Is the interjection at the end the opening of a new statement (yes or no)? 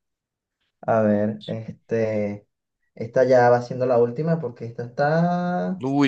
yes